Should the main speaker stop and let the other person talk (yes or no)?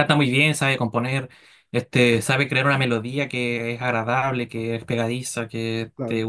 no